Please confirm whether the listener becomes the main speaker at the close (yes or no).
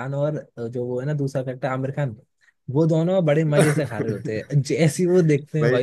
no